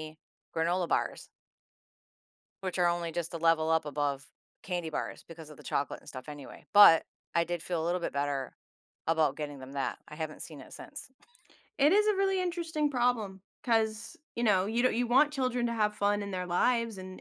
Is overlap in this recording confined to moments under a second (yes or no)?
yes